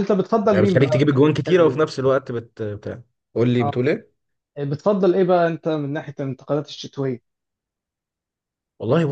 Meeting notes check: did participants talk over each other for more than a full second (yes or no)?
yes